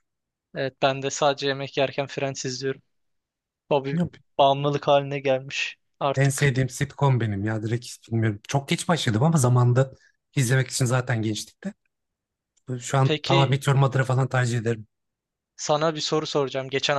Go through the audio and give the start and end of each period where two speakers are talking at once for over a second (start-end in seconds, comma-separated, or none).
none